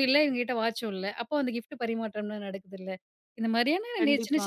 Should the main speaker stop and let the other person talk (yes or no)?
no